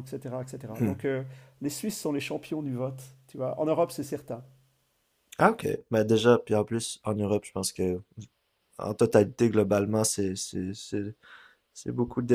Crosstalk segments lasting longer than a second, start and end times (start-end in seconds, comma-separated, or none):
none